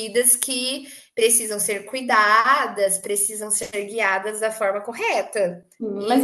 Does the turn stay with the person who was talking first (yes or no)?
no